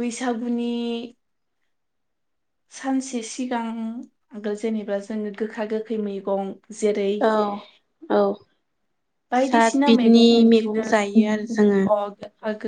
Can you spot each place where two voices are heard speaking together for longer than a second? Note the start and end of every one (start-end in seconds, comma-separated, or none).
9.5-11.8